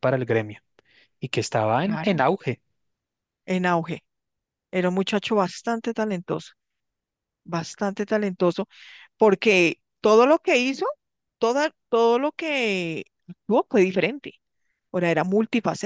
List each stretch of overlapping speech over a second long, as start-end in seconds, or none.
none